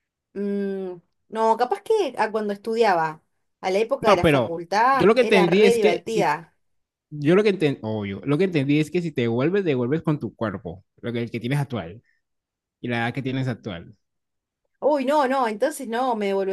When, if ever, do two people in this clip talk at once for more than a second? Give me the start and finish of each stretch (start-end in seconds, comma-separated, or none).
4.0-6.3